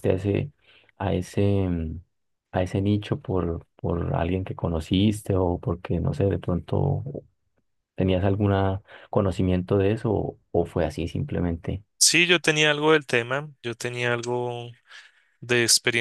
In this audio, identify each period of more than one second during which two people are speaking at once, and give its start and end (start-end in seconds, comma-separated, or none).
none